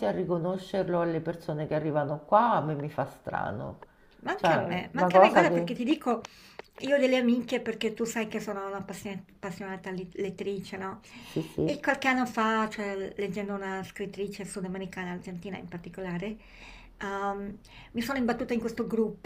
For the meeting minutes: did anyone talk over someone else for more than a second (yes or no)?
yes